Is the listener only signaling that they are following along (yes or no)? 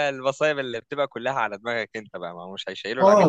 no